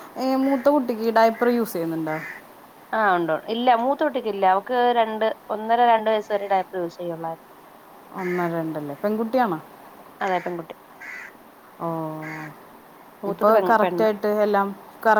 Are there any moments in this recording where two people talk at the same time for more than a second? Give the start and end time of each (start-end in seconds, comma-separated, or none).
none